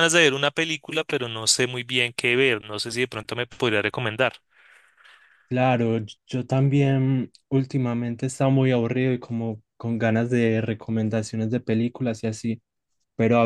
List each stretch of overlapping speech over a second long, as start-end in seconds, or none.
none